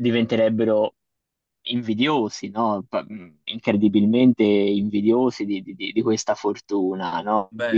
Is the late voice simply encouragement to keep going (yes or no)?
yes